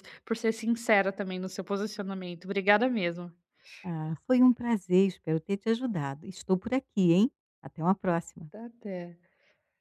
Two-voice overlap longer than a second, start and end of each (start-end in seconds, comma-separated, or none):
none